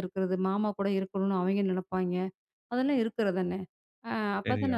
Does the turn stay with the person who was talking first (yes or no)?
yes